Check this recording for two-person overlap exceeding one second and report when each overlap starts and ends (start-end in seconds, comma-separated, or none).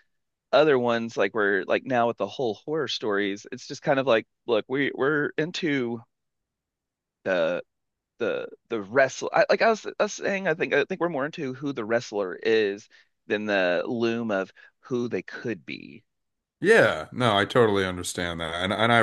none